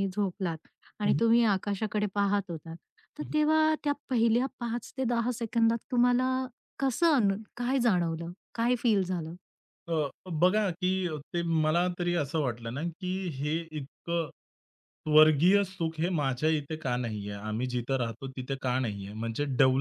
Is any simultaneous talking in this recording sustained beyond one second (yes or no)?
no